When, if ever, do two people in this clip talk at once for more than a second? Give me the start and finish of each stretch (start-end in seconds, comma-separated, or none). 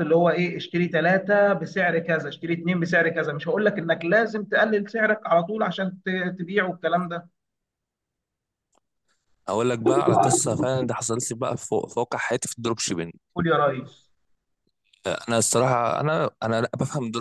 none